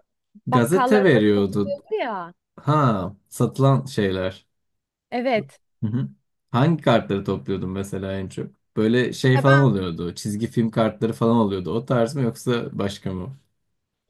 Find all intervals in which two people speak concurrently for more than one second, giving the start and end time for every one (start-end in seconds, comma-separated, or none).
0.5-1.8